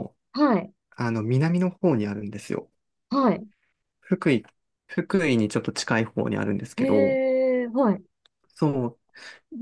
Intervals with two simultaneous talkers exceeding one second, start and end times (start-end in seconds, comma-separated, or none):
none